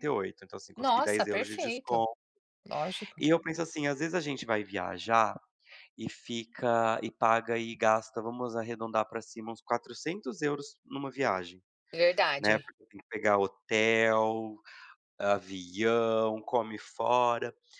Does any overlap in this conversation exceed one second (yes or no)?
yes